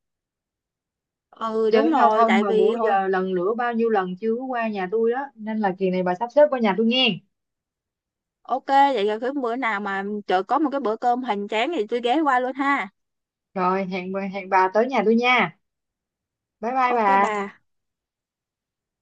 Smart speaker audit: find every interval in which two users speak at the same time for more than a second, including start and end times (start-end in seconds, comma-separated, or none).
1.7-2.9